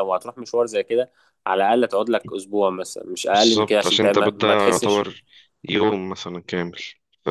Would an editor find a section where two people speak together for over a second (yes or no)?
yes